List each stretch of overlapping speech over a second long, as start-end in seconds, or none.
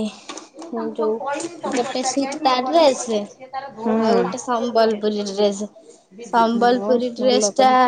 1.8-5.1